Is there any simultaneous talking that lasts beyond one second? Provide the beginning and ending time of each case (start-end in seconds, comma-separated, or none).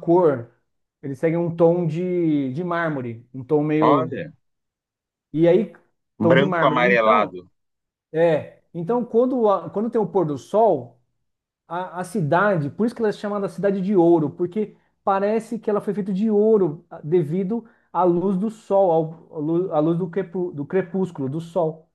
6.2-7.4